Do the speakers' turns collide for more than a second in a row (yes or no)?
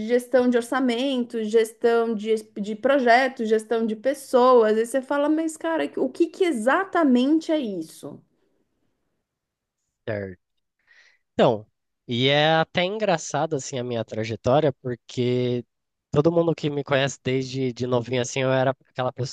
no